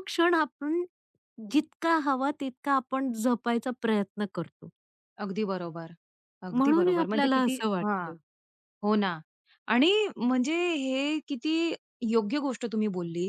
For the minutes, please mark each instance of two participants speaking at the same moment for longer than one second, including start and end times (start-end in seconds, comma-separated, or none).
6.5-8.1